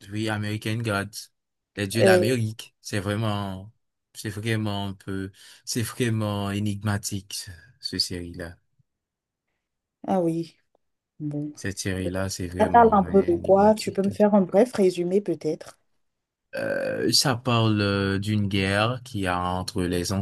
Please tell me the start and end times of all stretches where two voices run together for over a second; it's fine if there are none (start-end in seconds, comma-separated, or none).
12.6-14.1